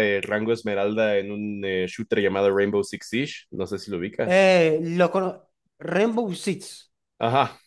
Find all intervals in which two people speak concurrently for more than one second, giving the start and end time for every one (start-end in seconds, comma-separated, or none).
none